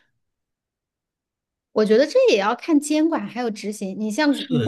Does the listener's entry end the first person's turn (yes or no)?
yes